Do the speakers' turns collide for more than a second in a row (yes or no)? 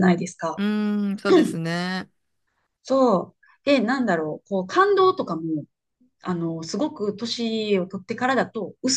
no